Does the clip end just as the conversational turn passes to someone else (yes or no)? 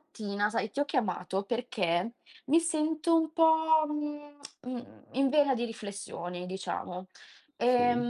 no